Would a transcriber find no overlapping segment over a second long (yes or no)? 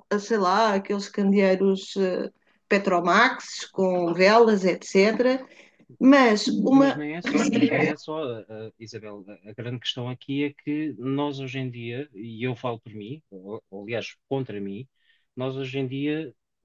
yes